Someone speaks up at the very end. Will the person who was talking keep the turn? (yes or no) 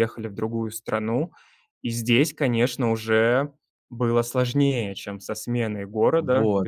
no